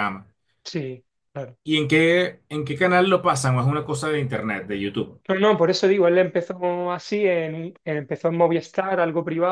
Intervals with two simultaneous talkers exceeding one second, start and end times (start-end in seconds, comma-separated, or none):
none